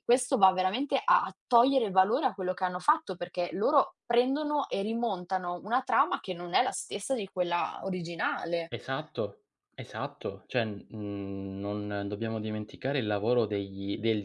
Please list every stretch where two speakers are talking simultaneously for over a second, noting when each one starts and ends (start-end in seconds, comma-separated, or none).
none